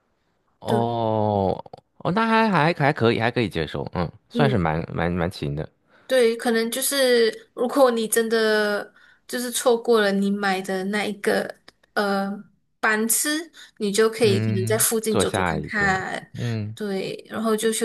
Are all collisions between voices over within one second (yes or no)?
no